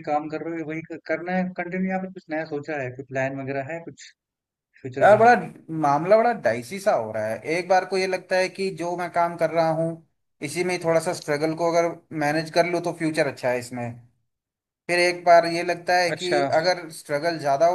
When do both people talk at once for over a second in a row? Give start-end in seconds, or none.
none